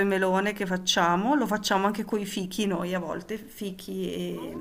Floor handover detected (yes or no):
no